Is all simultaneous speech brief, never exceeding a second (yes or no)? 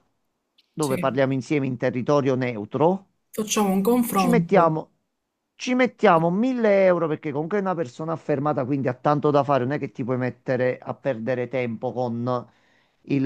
yes